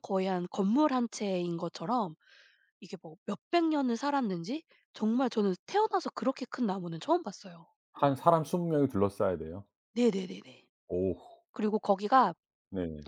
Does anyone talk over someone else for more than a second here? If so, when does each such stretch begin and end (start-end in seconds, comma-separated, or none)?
none